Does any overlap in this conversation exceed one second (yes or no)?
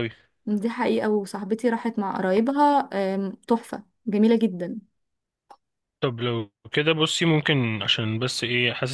no